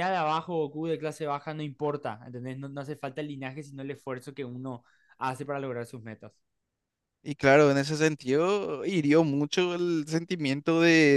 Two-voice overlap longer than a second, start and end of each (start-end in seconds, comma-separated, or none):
none